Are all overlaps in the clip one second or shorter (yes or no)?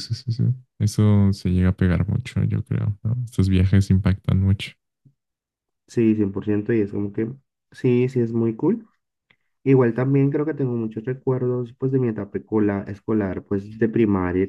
yes